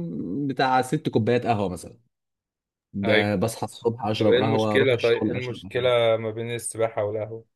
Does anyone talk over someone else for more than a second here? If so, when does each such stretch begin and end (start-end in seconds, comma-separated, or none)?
4.2-5.9